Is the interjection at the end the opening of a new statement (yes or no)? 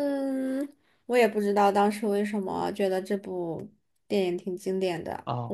yes